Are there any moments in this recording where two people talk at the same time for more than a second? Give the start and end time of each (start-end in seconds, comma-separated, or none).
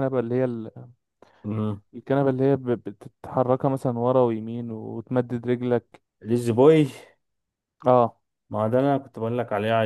none